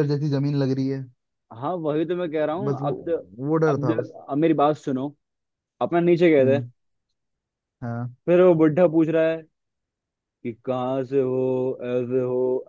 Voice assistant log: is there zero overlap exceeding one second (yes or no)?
yes